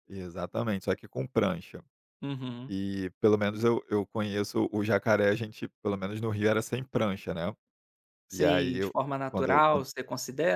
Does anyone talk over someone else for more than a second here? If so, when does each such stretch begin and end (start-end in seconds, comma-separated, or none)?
8.3-9.8